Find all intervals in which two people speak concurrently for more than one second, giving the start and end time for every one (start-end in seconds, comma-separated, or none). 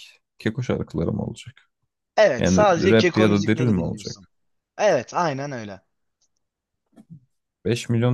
2.4-4.3